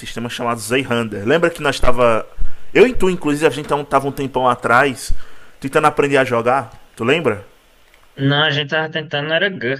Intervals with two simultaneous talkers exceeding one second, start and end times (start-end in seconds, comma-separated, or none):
none